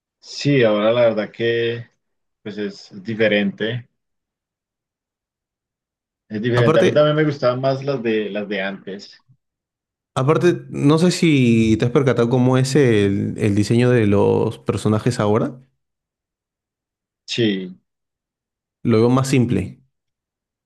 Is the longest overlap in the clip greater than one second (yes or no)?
no